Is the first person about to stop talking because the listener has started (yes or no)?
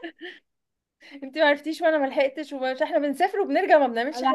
yes